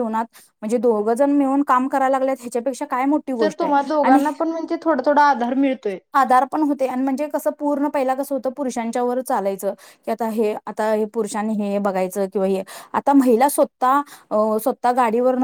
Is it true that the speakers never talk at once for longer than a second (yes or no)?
yes